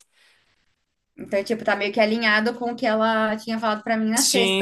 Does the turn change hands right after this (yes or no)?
yes